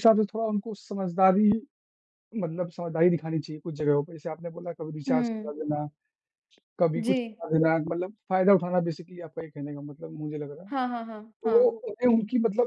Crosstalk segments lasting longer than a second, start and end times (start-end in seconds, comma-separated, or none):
none